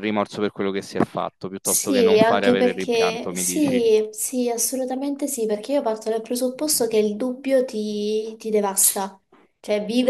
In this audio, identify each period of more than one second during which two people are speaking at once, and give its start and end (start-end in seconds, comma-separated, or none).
1.6-3.8